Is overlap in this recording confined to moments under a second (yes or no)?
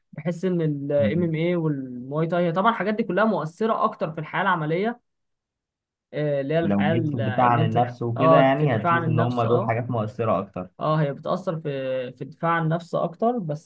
no